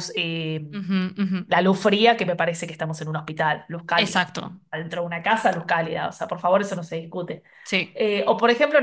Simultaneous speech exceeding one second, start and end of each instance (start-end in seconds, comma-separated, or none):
none